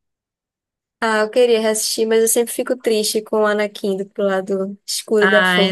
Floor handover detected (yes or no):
yes